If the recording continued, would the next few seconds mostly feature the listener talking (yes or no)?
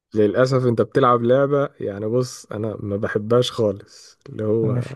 no